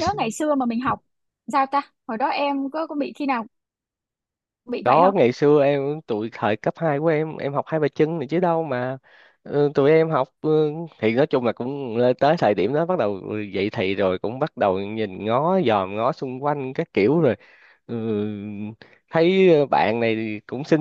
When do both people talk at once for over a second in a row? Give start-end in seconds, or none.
none